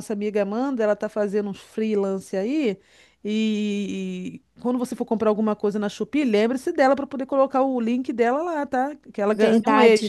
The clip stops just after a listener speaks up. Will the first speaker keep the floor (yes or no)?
no